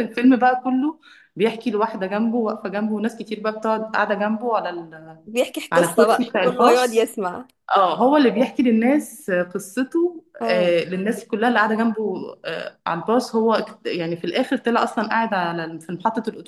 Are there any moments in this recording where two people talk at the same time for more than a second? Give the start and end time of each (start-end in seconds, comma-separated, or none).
5.7-7.1